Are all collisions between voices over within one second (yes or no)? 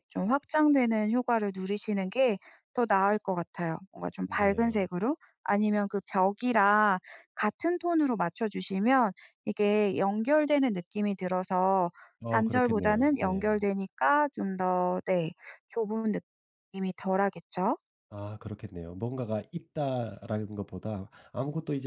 no